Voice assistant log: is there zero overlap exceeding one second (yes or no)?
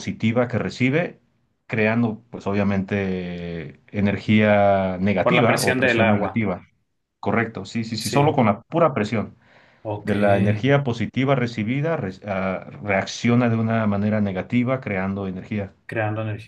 no